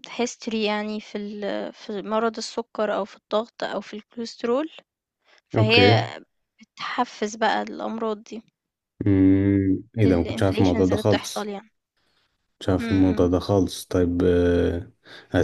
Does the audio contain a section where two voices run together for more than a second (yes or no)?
yes